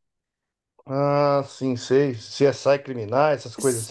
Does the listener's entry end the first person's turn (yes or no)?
yes